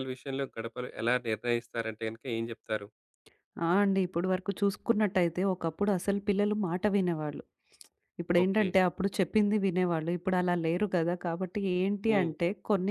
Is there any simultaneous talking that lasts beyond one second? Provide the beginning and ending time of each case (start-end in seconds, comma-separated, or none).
none